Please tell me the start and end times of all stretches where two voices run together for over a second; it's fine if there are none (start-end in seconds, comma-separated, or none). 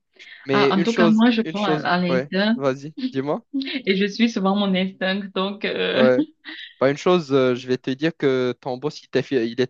0.5-2.5